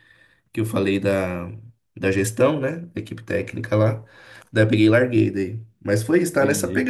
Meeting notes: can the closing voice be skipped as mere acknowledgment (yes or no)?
yes